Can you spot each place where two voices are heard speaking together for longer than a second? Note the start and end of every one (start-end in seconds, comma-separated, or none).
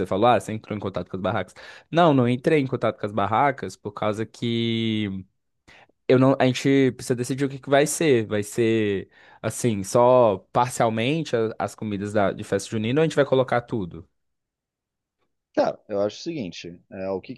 none